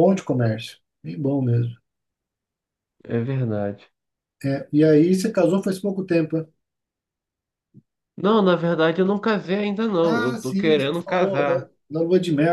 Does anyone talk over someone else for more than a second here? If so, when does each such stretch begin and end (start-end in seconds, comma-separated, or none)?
10.0-11.7